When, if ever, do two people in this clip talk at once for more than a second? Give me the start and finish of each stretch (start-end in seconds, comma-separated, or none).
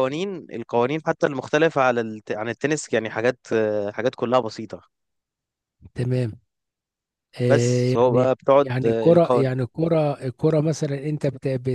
7.5-9.5